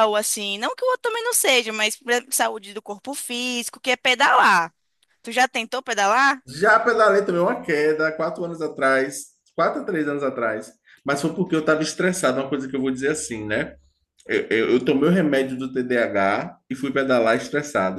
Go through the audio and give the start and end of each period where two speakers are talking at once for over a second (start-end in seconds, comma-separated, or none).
none